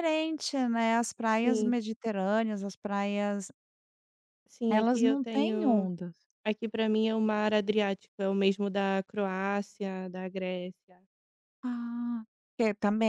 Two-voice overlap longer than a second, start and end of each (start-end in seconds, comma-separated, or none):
4.7-5.9